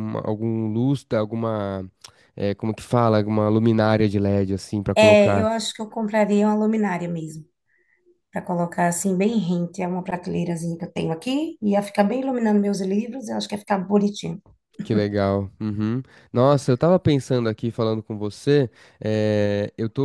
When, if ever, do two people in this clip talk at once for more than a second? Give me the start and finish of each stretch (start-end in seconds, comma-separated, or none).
none